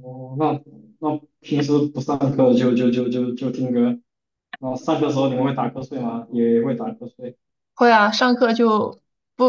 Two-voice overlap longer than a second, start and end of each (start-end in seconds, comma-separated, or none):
none